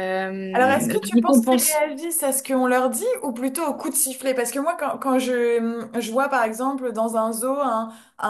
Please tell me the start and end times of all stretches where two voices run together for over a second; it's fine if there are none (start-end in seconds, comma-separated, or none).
0.5-1.8